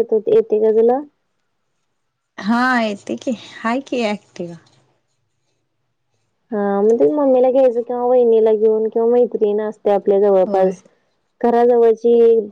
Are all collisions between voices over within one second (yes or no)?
yes